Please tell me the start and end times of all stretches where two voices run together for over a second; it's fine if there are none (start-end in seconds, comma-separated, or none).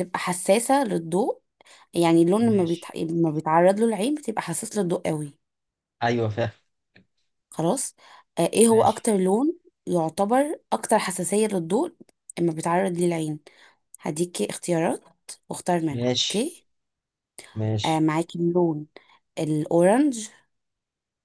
none